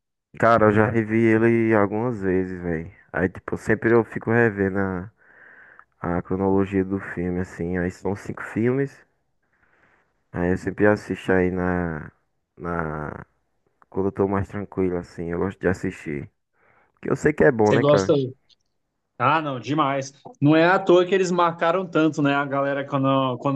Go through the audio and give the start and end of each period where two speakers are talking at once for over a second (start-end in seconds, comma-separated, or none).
none